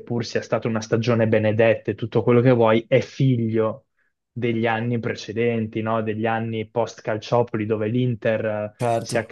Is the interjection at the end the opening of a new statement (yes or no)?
no